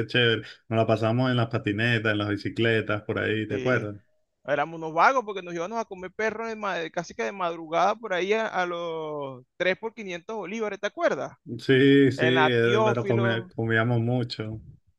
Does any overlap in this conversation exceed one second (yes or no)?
yes